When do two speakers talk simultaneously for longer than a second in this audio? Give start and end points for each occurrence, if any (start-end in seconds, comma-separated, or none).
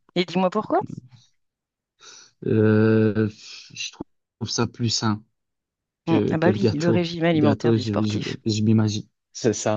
6.1-8.4